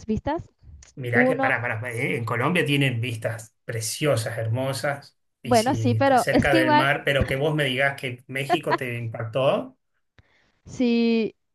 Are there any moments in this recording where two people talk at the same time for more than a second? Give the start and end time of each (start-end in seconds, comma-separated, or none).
5.4-6.9